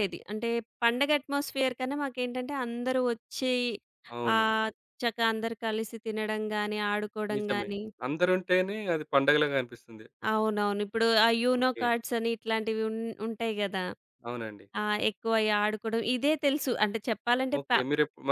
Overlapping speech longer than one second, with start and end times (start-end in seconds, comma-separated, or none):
none